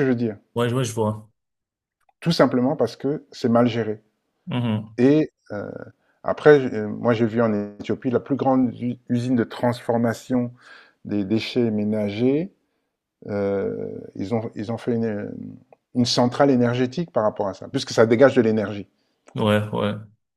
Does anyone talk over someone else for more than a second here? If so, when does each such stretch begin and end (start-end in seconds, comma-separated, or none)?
none